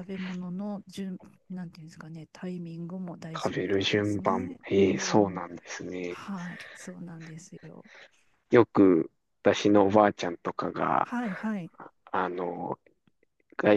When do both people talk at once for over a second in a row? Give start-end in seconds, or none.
3.4-5.4